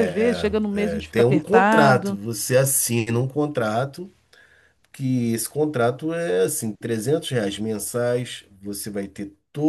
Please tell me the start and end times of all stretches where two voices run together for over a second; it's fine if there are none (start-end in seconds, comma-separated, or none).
0.7-2.2